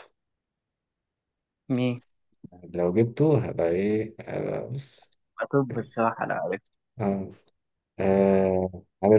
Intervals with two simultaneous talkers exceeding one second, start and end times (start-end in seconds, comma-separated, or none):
none